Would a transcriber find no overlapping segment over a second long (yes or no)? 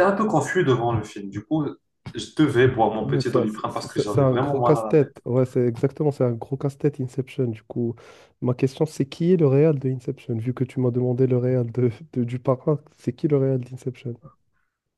no